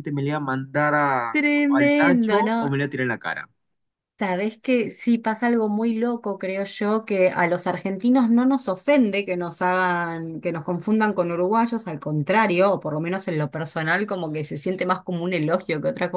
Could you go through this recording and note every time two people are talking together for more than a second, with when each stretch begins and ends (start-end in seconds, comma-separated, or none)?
1.3-2.8